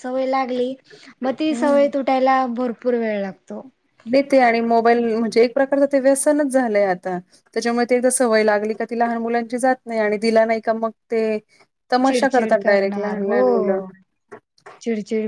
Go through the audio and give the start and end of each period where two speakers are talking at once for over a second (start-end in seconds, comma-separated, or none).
12.1-13.4